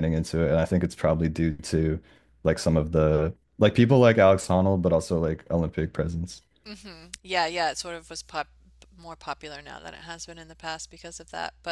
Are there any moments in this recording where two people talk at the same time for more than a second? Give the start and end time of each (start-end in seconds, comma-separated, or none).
none